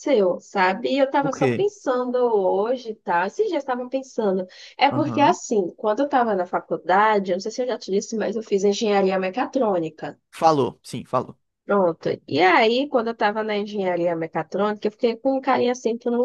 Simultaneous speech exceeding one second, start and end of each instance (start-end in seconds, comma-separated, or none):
none